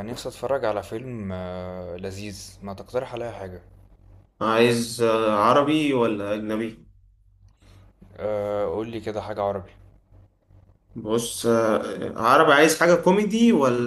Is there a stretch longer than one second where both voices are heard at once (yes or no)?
no